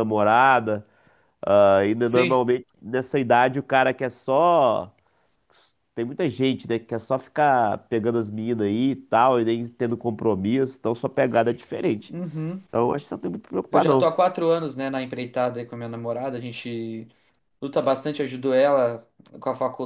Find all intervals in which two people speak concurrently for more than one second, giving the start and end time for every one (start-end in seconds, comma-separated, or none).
none